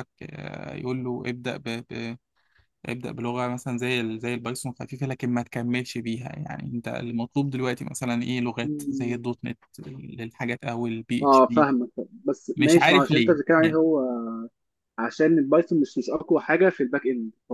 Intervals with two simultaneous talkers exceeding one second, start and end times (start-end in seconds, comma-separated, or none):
12.6-13.8